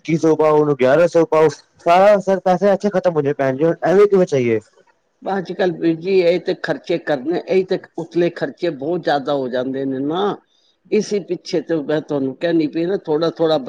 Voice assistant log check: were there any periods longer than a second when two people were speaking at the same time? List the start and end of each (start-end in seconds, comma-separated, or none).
none